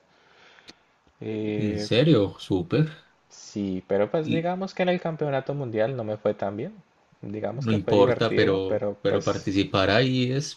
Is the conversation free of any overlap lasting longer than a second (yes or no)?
no